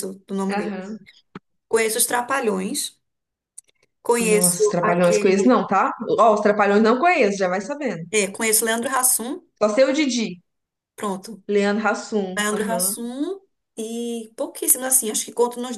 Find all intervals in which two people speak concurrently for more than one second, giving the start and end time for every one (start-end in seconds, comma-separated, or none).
4.2-5.5